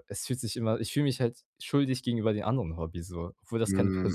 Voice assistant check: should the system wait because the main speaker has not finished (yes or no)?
no